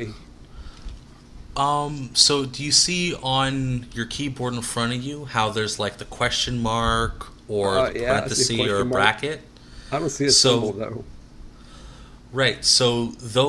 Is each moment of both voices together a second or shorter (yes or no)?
no